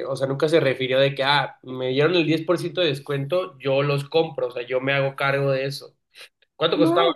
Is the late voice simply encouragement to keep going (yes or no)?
yes